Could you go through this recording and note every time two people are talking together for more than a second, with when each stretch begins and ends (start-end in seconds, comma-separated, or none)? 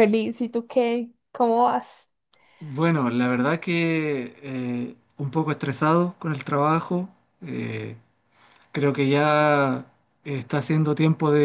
none